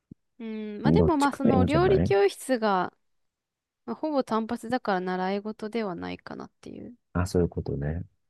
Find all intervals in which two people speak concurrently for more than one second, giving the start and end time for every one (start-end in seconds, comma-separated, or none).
0.8-2.1